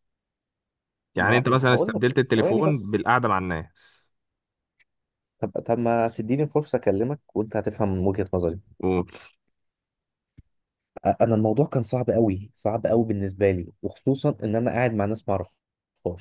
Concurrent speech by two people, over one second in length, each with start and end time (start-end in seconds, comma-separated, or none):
1.2-3.0